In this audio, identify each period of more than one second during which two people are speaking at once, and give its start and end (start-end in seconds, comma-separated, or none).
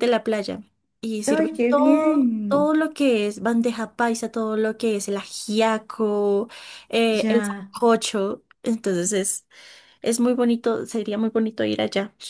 1.3-2.7